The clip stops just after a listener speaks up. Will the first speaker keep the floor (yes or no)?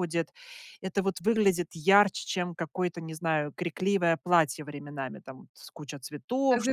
no